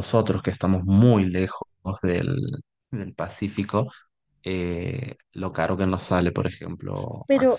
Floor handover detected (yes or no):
yes